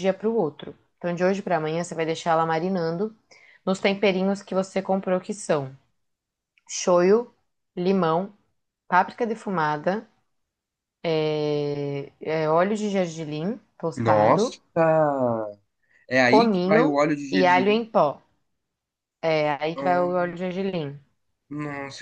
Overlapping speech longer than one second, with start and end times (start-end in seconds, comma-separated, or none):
16.2-17.8